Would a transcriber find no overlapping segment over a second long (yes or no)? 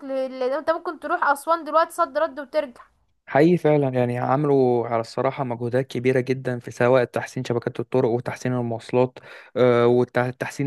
yes